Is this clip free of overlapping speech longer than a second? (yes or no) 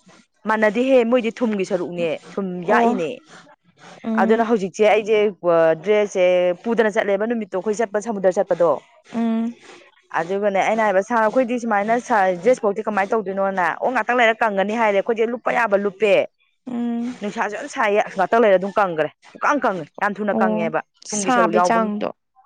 no